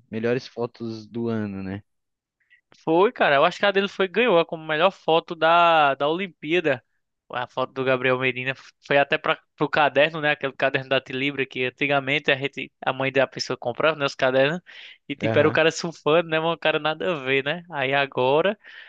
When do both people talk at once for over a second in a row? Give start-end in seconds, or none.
none